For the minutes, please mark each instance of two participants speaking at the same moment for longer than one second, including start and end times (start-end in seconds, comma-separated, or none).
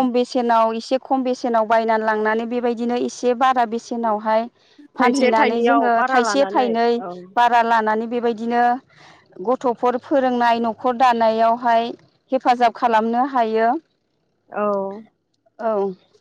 5.0-6.7